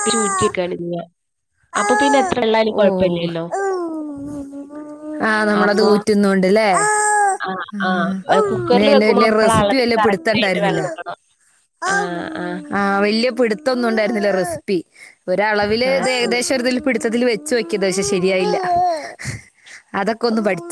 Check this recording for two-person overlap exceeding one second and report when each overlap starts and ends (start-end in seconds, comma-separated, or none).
9.1-10.9